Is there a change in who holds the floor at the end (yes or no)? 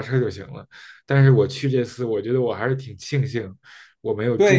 yes